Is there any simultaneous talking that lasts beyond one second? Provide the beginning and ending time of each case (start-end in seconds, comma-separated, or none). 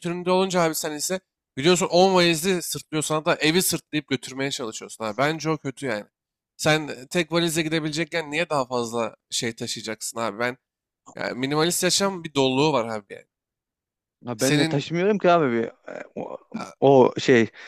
none